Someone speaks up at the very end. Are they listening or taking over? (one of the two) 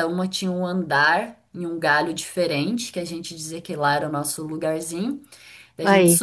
listening